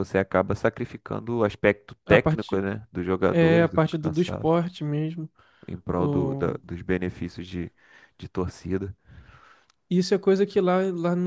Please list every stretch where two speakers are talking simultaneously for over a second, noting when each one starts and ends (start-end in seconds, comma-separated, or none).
3.3-4.5